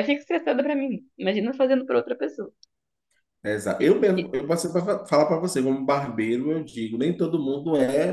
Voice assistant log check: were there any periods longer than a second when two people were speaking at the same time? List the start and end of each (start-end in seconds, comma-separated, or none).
none